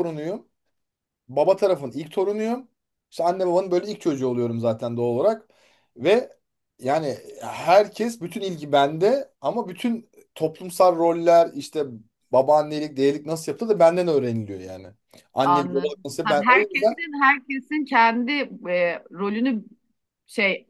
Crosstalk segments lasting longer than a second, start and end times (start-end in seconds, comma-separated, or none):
15.4-16.9